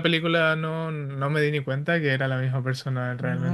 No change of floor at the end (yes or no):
no